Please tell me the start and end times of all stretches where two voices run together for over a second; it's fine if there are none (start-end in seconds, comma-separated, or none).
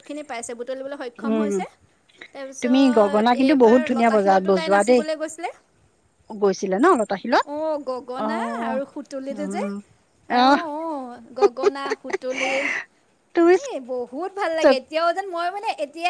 2.6-5.0